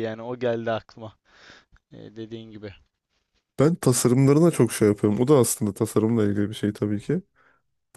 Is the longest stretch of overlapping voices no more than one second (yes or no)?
yes